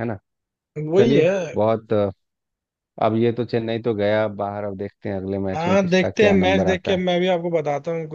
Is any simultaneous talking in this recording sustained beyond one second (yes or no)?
yes